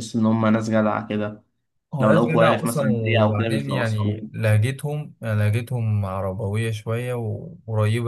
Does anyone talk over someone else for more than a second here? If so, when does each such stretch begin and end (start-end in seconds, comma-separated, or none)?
2.0-4.5